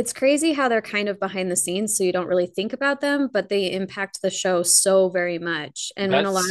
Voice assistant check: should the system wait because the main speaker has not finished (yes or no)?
yes